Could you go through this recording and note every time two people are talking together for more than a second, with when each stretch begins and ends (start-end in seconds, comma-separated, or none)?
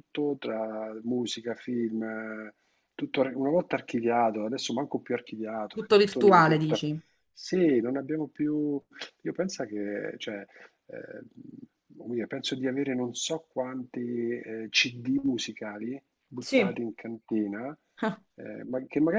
5.7-6.9